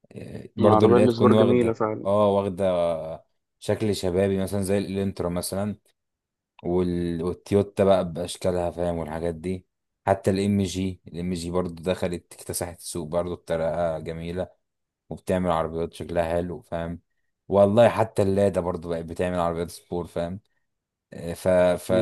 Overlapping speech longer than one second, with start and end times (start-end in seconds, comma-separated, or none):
0.6-2.0